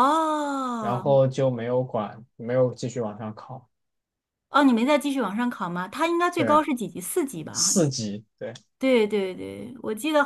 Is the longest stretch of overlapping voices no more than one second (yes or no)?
yes